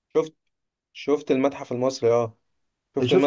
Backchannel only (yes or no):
yes